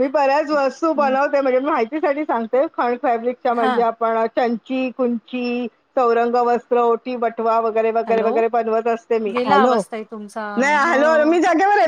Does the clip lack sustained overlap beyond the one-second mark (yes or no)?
yes